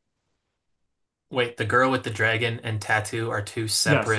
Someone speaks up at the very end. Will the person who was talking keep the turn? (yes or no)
no